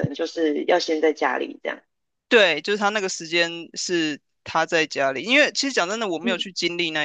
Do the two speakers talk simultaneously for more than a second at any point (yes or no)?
no